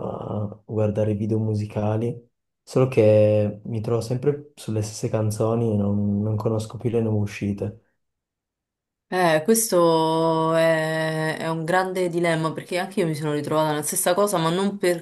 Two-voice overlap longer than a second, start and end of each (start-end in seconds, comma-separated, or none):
none